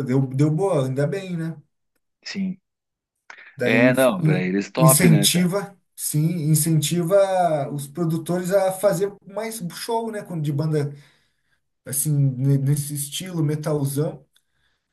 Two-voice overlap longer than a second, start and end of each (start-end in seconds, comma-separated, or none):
3.6-5.5